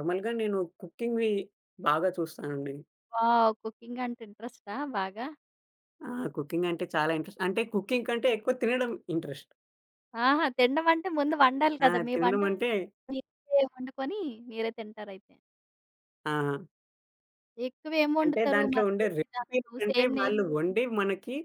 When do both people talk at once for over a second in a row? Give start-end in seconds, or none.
18.2-20.4